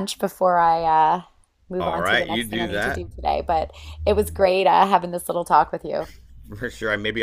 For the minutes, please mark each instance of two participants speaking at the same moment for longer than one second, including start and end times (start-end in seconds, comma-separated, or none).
1.8-3.0